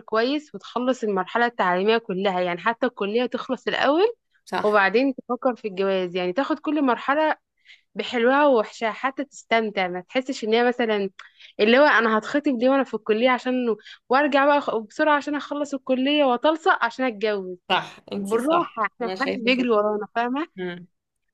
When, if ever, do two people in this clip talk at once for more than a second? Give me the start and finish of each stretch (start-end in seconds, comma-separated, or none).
18.2-19.7